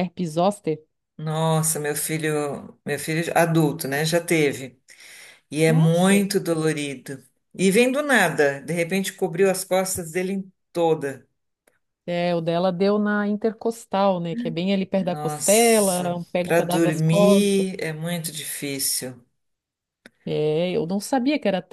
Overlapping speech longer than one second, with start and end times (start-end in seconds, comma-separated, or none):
15.1-17.6